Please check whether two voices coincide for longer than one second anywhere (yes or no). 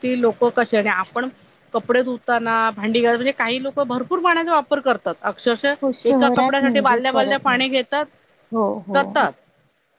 yes